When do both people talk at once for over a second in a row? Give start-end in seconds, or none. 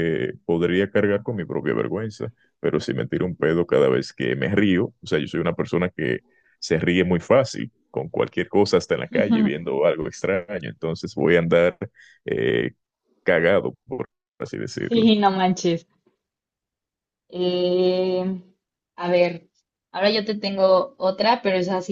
none